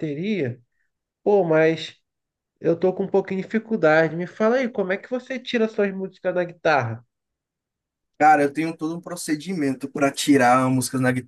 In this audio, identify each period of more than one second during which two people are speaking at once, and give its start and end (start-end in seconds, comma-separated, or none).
none